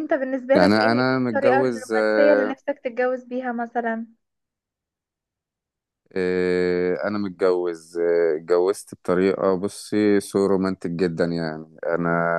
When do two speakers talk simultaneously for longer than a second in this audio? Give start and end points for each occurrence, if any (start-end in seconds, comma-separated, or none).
0.5-2.5